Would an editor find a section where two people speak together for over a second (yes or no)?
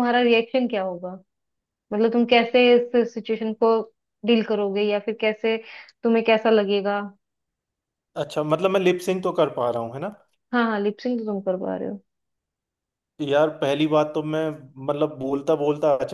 no